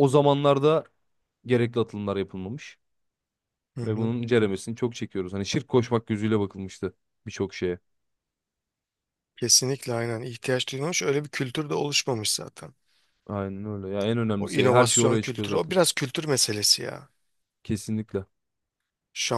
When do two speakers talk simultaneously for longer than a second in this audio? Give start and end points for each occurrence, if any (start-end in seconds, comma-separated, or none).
14.4-15.7